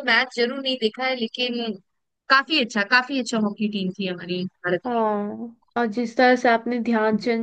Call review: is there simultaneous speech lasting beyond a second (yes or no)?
no